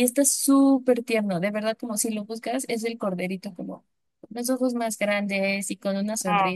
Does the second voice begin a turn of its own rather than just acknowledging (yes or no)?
no